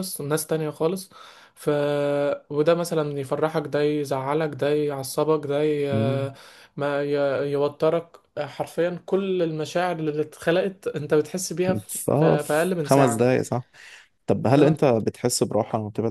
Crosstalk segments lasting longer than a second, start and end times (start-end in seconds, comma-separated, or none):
11.9-13.3